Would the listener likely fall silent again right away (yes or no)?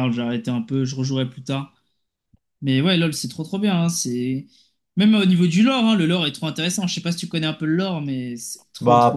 no